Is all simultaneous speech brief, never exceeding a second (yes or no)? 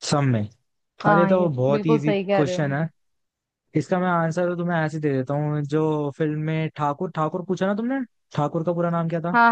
no